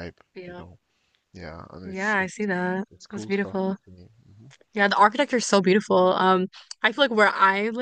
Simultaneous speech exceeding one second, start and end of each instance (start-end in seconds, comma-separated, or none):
1.8-3.8